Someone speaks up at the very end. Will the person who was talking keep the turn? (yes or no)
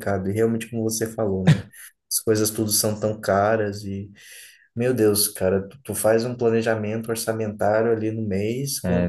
no